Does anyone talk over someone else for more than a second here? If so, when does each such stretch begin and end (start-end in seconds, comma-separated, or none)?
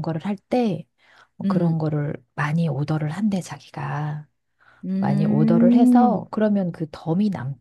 5.0-6.3